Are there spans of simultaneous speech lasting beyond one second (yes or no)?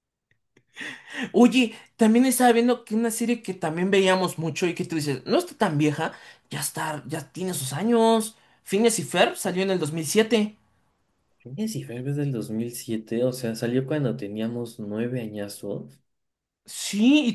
no